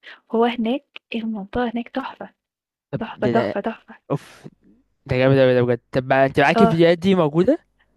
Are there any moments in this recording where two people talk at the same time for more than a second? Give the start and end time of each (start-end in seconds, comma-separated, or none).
none